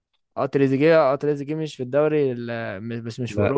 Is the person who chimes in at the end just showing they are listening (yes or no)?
yes